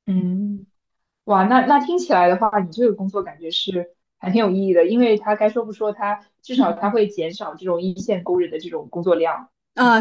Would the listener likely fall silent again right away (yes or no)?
no